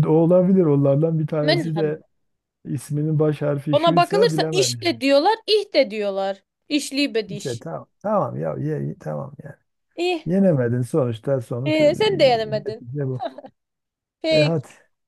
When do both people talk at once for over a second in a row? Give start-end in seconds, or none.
3.7-5.0